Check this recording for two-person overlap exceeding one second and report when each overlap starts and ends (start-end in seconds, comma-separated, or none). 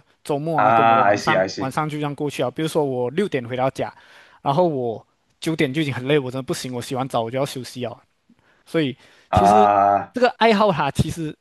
0.5-1.7